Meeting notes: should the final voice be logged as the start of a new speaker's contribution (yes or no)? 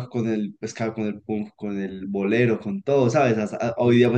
no